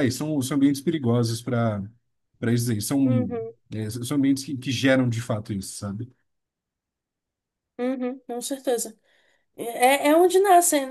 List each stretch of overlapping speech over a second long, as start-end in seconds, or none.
none